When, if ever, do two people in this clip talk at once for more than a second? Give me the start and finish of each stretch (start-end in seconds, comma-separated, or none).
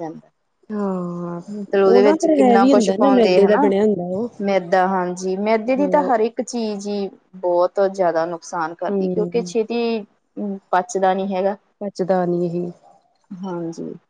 1.9-3.7